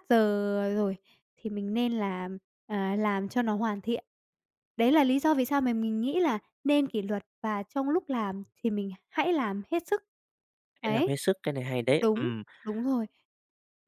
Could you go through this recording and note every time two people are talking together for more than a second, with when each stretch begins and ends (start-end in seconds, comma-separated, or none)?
none